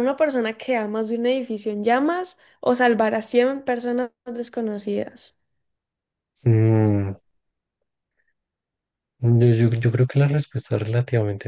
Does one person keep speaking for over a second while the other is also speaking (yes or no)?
no